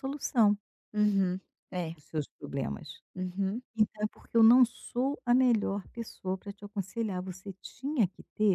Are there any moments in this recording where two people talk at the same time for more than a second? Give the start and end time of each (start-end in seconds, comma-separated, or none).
none